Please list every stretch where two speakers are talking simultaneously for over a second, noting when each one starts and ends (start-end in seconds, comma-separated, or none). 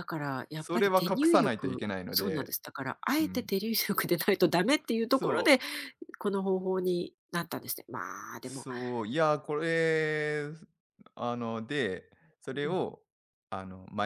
0.5-2.5